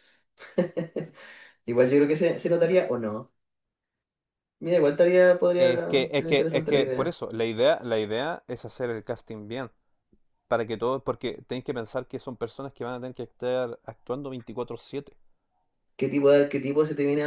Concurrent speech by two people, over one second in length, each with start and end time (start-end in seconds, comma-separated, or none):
5.6-7.2